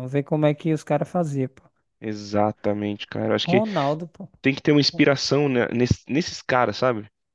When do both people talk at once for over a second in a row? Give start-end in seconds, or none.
none